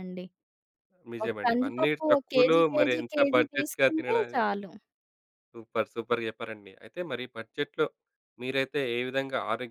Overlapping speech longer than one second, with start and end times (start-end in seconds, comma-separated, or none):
1.2-4.5